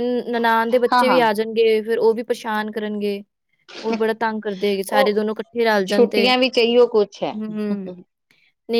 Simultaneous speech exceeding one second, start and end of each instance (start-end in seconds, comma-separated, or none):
none